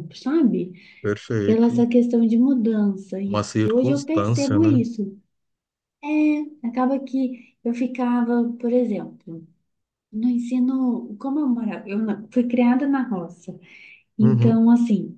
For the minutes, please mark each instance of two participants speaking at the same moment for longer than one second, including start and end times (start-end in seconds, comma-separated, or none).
3.2-4.8